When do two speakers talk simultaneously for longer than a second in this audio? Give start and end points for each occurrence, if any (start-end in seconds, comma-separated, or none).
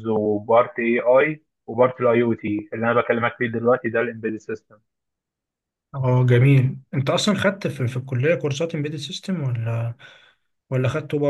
none